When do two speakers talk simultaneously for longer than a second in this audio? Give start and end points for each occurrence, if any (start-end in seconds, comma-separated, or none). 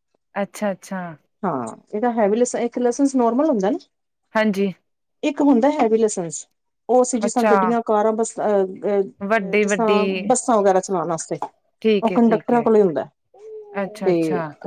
none